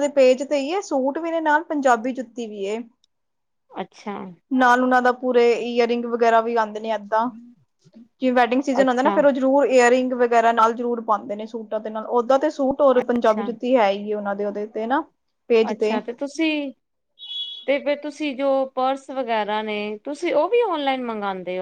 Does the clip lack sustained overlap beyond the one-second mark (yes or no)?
yes